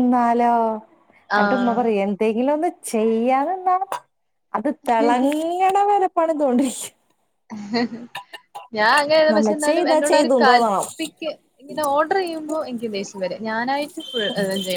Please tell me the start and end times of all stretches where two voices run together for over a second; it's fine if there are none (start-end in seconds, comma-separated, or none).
9.3-10.9